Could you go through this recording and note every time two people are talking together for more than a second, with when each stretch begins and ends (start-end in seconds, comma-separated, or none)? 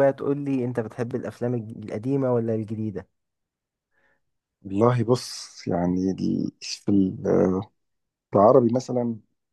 none